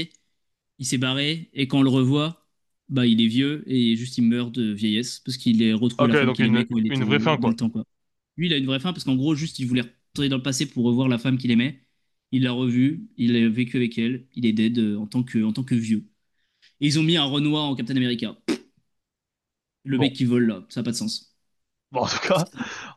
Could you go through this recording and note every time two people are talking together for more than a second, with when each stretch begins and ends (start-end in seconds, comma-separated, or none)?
6.0-7.6